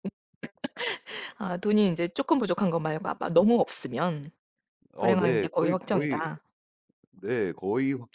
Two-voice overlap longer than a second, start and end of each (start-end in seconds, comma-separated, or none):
5.0-6.2